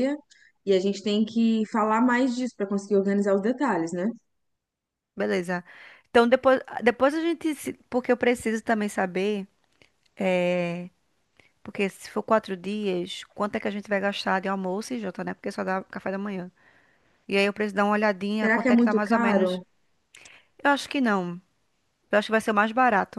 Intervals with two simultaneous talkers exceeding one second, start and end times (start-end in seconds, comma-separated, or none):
18.4-19.6